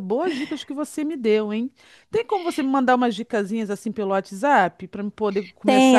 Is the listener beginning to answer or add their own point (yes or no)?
yes